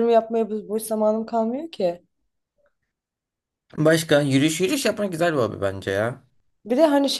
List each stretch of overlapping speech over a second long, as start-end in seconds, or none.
none